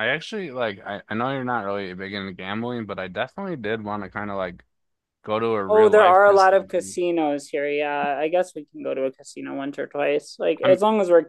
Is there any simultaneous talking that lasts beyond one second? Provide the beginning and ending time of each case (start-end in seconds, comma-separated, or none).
5.7-6.9